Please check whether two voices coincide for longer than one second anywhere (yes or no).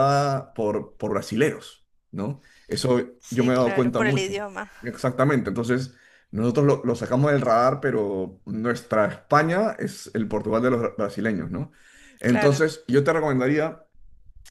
yes